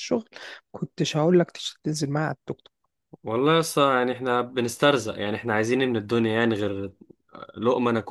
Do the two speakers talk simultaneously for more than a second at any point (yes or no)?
no